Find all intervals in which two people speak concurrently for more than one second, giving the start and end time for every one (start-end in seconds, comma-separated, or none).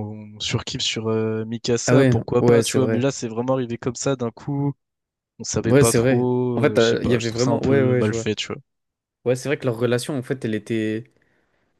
1.9-3.1, 5.6-8.3